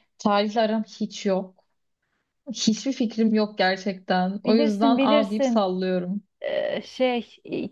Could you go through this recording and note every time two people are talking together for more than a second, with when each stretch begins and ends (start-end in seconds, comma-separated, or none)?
4.4-5.6